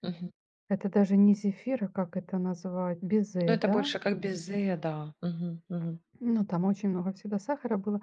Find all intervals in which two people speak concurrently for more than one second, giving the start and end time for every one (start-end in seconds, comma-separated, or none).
none